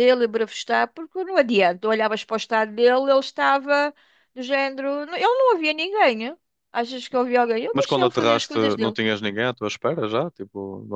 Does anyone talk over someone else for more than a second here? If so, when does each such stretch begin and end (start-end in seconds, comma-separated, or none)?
7.7-9.0